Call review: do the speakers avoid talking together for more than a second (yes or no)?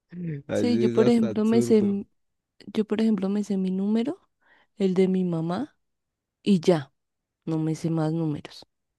no